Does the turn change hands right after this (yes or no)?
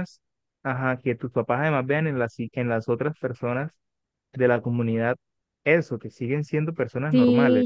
yes